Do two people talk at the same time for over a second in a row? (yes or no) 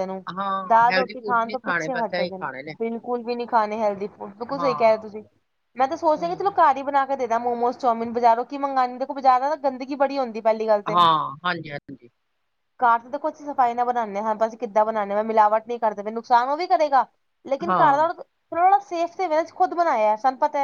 yes